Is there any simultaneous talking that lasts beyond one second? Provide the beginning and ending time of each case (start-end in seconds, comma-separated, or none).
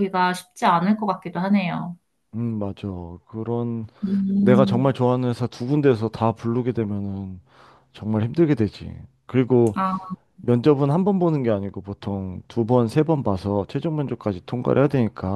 none